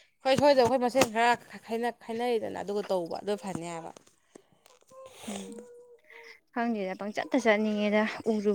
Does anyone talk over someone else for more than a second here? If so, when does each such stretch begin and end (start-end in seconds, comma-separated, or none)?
none